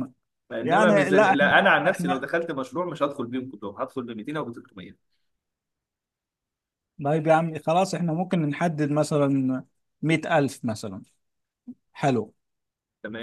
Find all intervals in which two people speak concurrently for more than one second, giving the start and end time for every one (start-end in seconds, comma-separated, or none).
0.6-2.2